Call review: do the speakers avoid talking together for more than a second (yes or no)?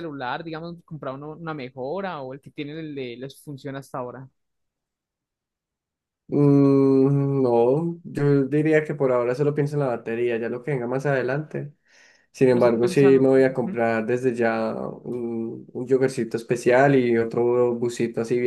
no